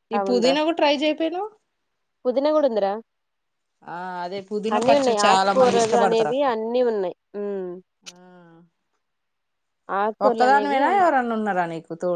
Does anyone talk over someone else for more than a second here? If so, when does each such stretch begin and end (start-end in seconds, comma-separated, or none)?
4.8-6.5